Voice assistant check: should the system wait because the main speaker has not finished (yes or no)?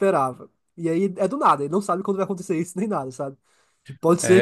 yes